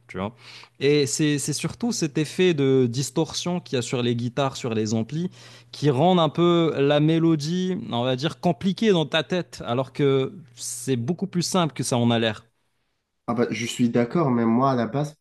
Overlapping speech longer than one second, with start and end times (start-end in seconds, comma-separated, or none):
none